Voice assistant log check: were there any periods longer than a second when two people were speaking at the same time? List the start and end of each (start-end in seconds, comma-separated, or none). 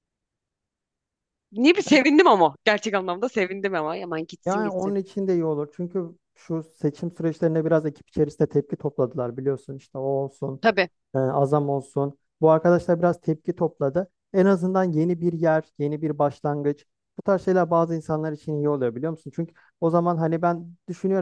none